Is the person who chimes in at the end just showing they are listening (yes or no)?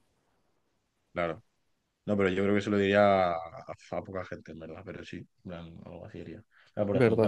no